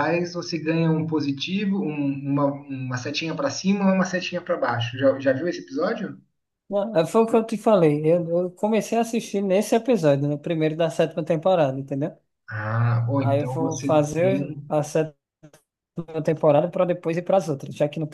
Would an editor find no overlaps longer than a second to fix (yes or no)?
no